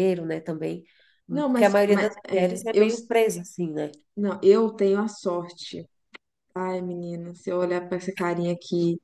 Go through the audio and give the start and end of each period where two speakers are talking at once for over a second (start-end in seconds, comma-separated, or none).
1.3-2.9